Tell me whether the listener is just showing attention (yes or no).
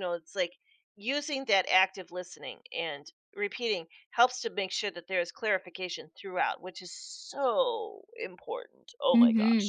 no